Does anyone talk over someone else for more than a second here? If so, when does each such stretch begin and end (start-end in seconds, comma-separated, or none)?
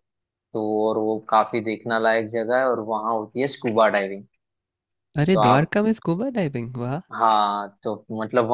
none